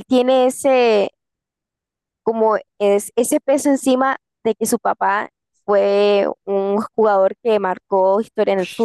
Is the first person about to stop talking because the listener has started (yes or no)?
yes